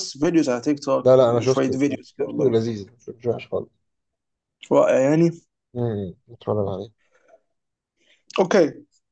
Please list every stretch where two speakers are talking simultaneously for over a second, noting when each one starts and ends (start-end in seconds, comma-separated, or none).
1.0-2.5